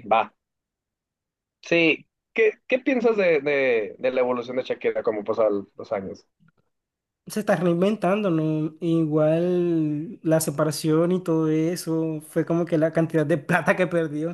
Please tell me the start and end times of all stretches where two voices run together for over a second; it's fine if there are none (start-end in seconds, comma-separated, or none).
none